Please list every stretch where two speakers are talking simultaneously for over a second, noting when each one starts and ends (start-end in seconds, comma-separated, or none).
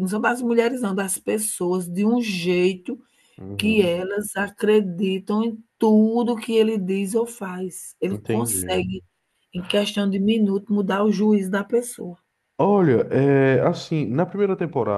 none